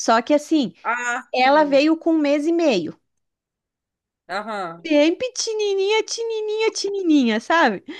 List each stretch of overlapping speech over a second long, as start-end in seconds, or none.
none